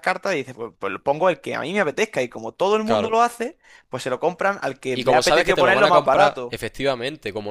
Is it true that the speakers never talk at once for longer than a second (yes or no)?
no